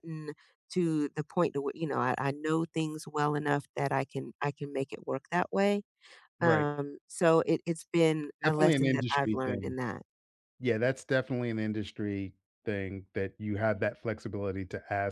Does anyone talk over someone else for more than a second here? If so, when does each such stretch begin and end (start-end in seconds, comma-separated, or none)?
8.4-9.8